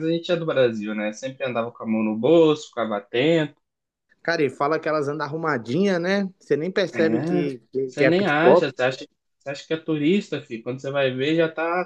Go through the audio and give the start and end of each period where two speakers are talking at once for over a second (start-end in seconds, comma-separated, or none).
6.9-8.7